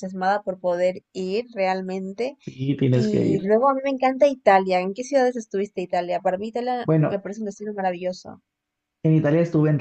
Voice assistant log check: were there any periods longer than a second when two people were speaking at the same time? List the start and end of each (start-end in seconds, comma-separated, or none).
none